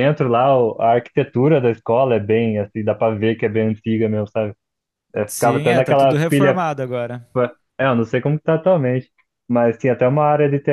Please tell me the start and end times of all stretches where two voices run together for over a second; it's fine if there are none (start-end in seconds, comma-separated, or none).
5.3-6.6